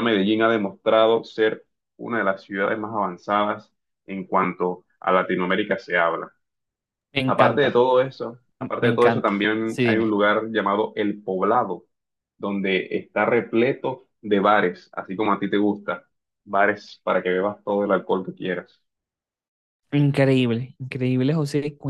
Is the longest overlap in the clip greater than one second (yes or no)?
yes